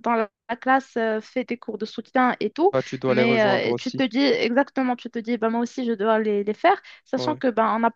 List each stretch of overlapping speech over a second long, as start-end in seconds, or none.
2.7-4.1